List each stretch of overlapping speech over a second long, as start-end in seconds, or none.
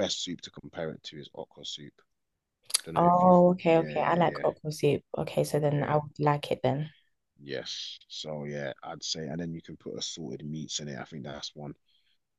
3.0-4.4